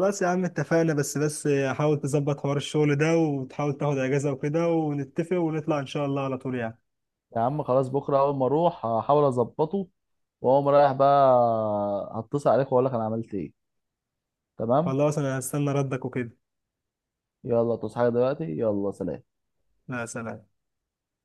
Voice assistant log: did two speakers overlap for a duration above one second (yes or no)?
no